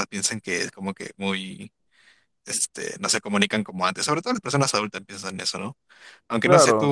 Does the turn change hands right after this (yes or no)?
yes